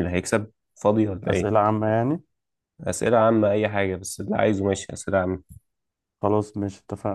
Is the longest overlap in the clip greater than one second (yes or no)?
no